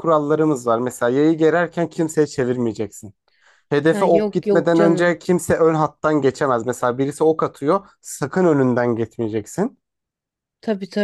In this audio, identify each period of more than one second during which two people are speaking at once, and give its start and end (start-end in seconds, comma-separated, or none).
3.9-5.2